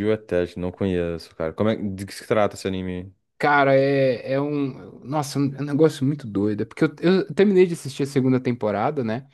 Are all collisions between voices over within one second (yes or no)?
yes